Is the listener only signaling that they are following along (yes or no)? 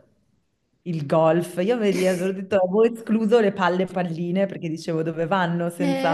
no